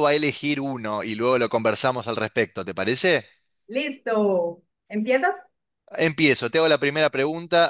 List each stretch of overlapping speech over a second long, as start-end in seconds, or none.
none